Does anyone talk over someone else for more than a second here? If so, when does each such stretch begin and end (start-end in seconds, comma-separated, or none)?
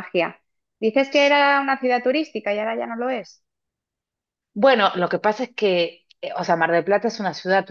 none